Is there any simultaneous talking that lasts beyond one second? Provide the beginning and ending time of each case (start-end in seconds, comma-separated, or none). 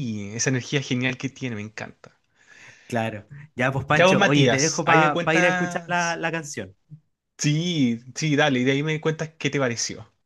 3.9-6.2